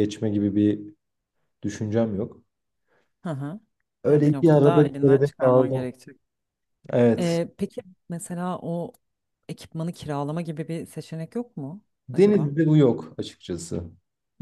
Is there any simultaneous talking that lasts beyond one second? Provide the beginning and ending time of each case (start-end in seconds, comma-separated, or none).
4.1-5.9